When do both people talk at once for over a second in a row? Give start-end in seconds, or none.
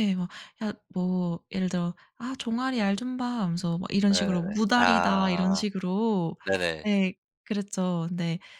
4.1-5.6